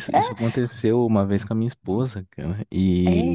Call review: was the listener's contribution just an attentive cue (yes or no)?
yes